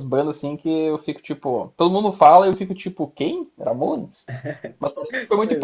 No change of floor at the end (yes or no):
yes